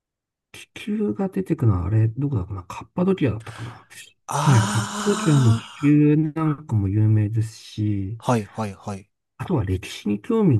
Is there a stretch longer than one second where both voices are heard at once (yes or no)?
yes